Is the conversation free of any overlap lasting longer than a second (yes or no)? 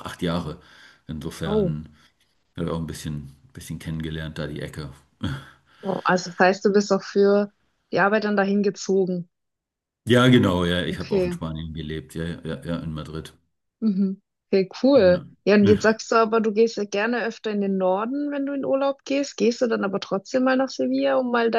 yes